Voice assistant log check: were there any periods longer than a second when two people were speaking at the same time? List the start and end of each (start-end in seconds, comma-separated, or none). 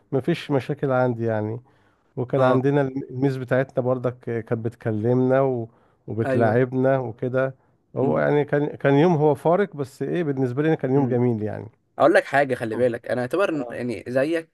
none